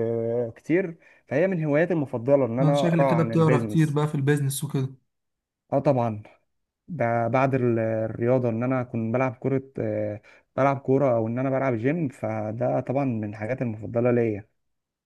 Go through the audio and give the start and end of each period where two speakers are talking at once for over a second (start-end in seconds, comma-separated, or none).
2.6-4.0